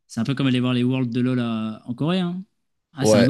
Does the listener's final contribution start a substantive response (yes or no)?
yes